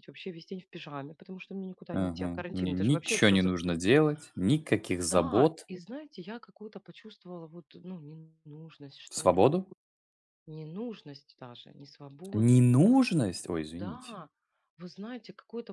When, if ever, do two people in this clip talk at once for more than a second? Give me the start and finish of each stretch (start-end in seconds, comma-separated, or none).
1.9-3.8